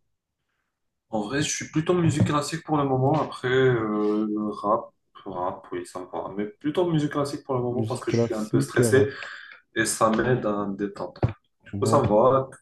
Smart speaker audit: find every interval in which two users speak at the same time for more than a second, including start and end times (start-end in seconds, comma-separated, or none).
7.7-9.1